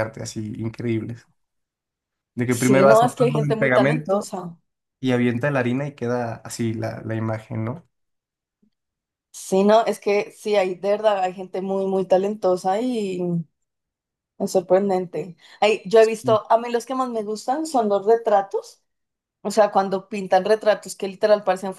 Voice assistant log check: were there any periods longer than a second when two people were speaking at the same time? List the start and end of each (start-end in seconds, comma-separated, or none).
2.6-4.3